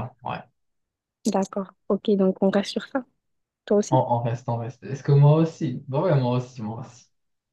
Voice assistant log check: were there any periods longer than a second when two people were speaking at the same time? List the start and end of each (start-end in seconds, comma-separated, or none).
none